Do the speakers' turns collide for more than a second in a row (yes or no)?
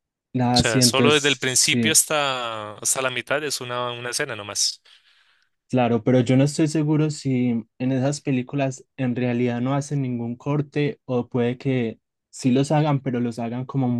yes